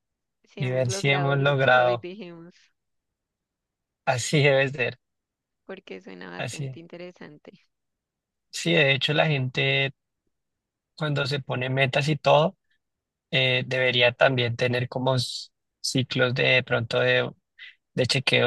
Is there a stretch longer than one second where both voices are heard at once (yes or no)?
yes